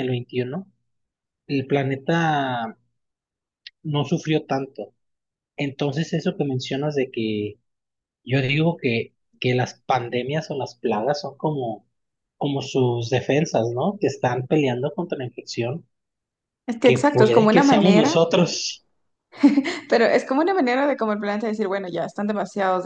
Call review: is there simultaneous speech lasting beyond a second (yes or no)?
yes